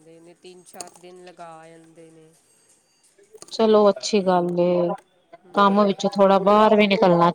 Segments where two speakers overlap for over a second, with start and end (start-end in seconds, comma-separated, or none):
none